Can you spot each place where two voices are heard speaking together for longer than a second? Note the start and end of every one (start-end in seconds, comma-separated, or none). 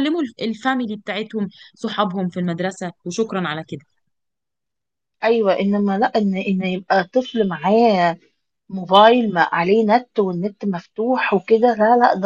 none